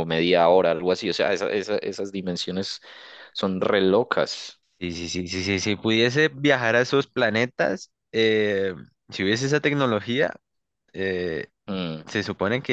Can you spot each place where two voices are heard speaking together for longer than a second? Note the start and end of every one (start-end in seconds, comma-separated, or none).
none